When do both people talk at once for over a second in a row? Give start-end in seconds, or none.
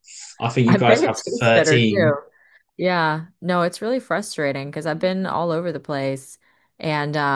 0.7-2.1